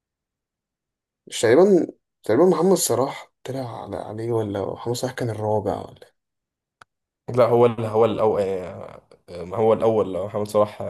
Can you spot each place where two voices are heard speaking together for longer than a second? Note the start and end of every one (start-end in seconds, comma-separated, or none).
none